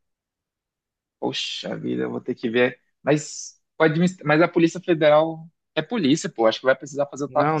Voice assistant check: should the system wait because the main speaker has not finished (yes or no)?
no